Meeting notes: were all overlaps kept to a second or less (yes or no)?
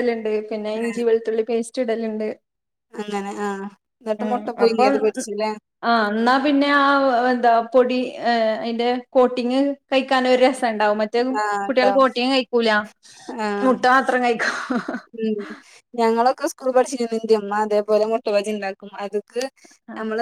yes